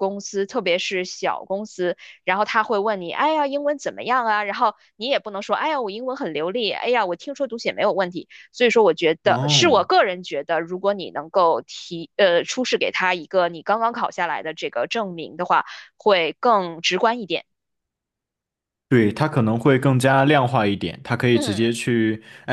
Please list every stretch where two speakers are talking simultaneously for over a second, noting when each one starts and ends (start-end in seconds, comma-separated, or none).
none